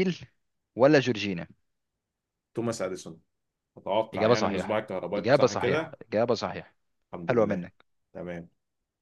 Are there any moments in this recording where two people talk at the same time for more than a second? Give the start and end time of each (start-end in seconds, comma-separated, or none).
4.1-6.0